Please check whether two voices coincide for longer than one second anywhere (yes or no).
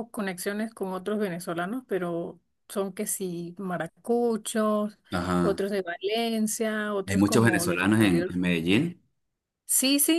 yes